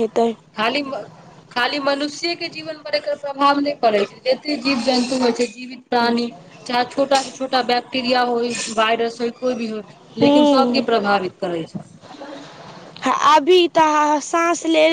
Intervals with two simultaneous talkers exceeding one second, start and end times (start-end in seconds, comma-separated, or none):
none